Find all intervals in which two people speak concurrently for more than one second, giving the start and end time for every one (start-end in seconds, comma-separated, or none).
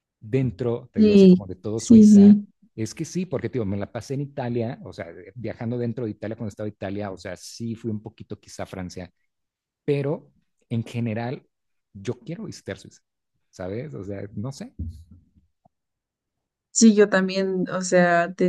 1.0-2.4